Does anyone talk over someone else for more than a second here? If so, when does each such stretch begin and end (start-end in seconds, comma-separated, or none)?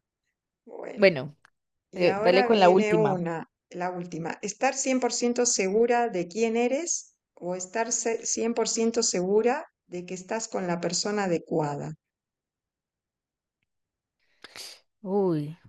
1.9-3.1